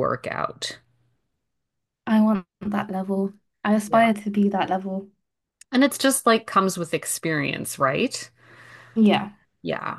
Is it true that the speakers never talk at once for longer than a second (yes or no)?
yes